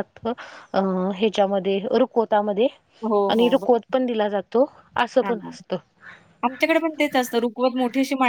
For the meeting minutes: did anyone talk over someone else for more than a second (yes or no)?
no